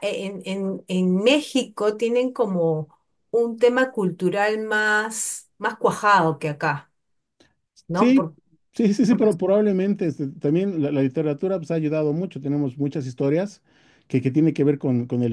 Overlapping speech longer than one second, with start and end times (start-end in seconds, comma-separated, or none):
none